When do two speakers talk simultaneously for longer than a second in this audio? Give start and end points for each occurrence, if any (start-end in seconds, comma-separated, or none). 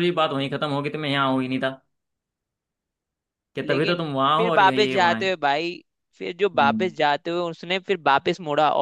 3.6-5.3